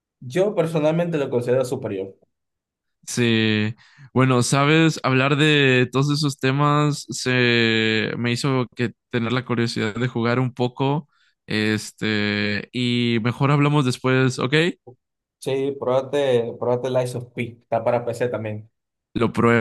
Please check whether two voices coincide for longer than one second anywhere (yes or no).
no